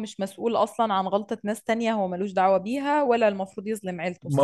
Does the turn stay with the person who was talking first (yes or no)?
no